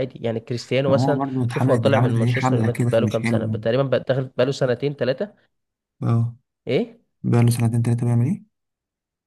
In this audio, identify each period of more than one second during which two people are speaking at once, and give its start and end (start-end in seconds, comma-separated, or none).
0.9-3.6